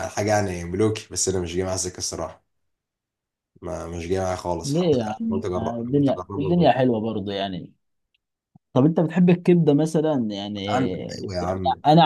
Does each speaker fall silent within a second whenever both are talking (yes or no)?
no